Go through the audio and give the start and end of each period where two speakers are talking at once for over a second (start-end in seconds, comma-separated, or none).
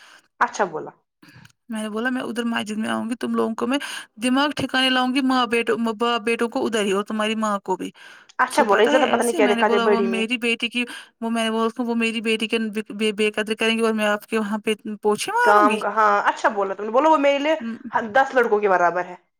8.5-10.2